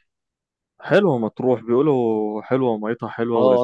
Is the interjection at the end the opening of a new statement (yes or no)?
yes